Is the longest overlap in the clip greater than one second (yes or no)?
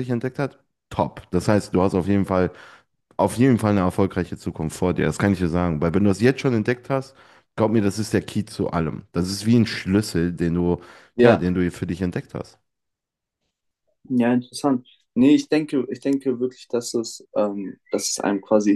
no